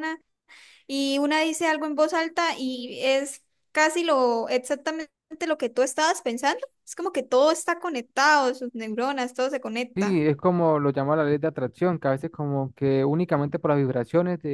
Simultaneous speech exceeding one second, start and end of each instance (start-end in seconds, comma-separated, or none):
none